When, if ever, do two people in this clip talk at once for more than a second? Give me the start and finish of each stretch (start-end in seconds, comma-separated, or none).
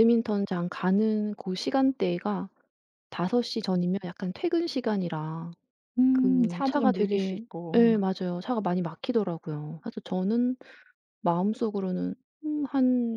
6.1-7.9